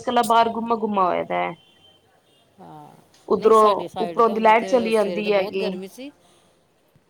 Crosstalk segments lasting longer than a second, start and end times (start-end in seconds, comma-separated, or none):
4.0-5.7